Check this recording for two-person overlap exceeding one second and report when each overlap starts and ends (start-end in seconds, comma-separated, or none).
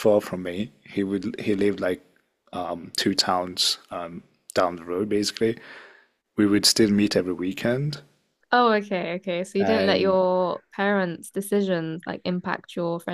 none